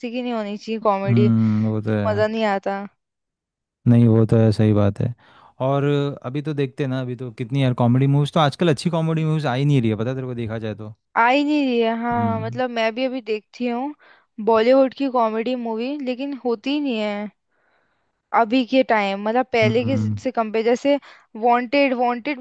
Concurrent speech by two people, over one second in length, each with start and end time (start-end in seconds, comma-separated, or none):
none